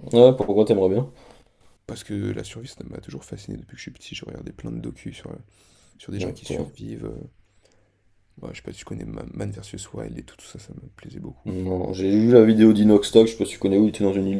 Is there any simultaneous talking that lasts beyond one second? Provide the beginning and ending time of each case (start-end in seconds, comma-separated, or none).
none